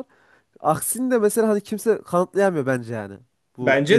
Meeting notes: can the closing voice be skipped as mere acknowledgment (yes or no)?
no